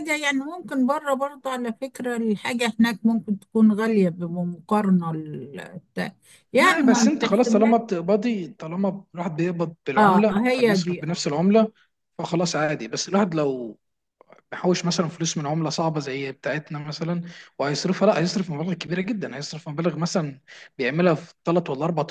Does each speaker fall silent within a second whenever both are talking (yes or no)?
no